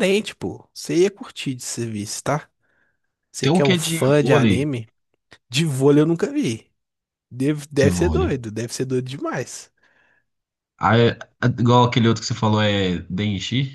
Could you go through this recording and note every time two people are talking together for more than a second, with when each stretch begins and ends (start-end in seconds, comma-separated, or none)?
3.4-4.7